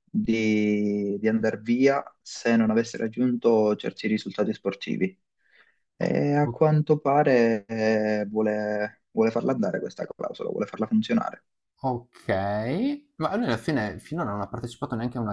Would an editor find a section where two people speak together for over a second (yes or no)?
no